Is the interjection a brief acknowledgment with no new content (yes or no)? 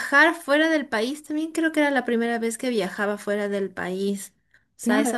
no